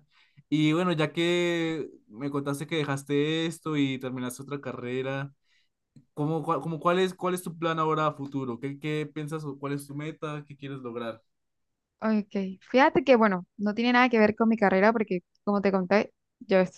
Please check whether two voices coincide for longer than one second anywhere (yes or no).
no